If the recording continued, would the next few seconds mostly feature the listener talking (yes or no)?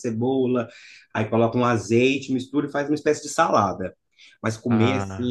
no